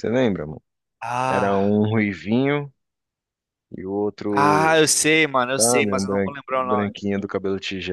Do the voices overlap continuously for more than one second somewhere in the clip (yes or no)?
yes